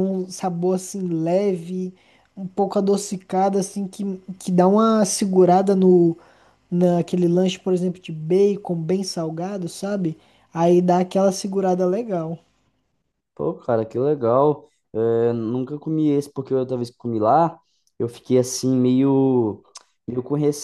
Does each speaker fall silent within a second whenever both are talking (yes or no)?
yes